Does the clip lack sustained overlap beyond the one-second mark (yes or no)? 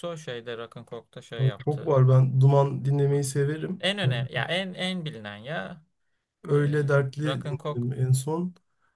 no